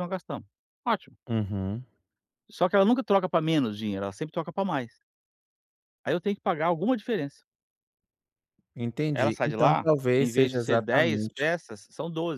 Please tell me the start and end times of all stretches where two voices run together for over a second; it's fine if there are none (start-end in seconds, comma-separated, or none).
9.1-11.5